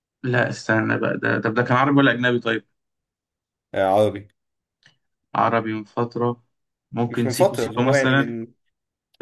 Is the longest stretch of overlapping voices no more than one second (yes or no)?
no